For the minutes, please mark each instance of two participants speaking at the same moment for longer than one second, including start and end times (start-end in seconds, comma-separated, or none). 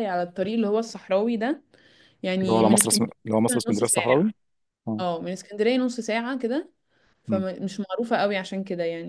2.4-4.3